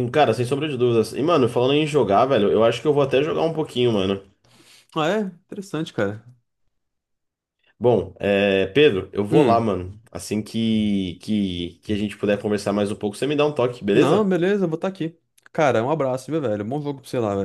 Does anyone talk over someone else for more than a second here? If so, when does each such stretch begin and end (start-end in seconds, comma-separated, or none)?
none